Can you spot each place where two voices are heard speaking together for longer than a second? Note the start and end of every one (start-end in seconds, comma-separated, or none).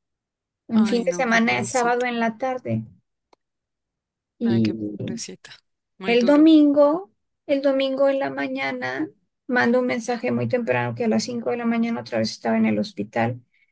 0.7-2.0